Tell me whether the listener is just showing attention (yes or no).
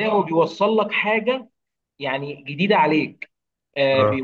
yes